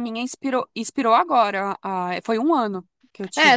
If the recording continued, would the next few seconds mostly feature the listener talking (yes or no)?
yes